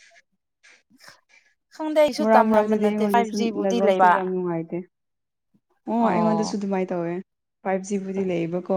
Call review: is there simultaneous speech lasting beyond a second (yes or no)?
yes